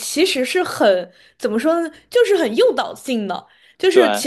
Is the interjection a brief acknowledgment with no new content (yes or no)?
yes